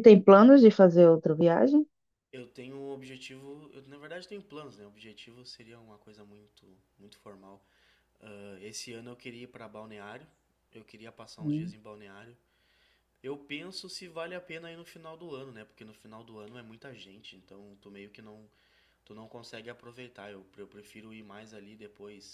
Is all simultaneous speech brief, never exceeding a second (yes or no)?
yes